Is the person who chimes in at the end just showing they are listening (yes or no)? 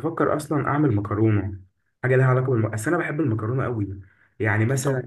yes